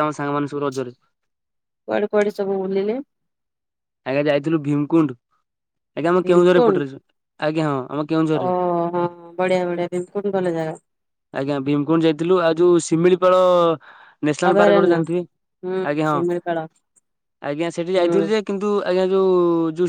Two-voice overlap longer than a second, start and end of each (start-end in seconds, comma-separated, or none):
none